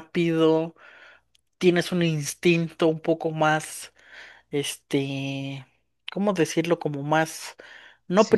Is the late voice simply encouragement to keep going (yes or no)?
yes